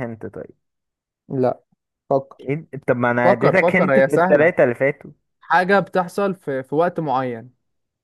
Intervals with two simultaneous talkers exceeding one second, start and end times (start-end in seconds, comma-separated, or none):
3.2-4.5